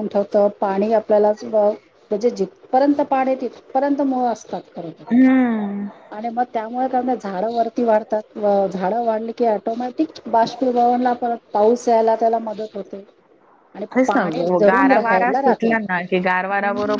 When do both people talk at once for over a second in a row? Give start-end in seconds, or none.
13.9-15.7